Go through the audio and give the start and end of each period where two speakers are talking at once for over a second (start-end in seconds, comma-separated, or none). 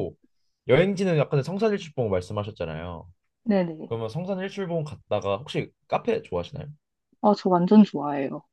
none